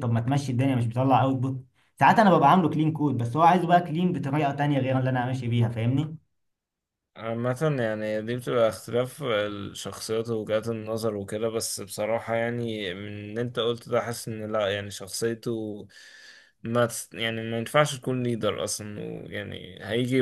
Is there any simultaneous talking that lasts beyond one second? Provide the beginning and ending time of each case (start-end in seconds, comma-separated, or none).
none